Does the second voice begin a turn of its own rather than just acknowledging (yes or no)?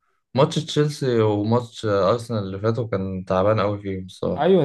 yes